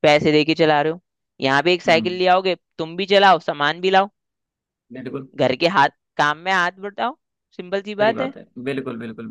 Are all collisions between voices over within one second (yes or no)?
yes